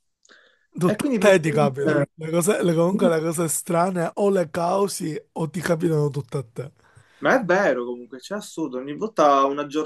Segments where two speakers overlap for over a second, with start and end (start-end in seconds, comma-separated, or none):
0.9-2.1